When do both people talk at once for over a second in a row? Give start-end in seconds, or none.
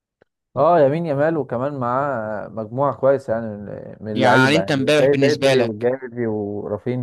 4.1-5.9